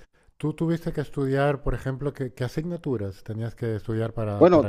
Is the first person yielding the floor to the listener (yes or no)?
yes